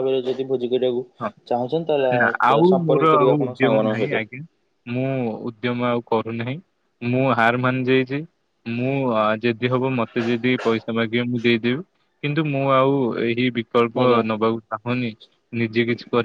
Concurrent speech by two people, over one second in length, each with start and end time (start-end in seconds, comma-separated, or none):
1.5-4.1